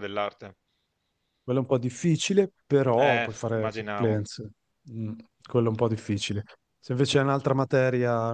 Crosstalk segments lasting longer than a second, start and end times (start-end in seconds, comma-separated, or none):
3.0-4.2